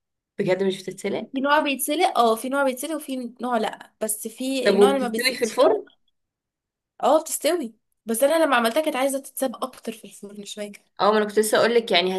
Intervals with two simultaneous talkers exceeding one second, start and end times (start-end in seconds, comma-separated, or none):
4.7-5.8